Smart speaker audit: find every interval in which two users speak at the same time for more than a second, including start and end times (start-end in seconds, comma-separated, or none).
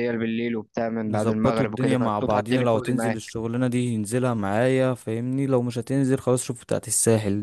1.1-3.3